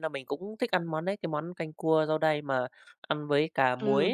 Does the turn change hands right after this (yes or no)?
yes